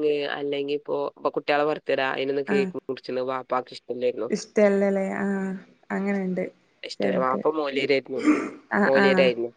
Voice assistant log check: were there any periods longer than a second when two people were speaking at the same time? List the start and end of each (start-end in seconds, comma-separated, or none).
none